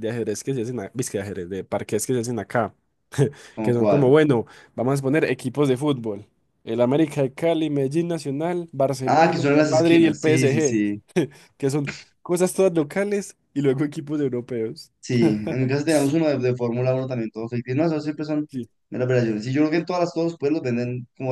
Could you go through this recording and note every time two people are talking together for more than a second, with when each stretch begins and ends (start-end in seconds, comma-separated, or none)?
9.1-11.0